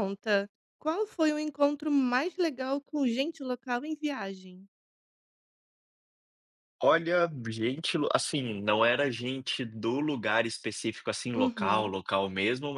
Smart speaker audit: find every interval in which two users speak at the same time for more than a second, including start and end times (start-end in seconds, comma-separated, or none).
none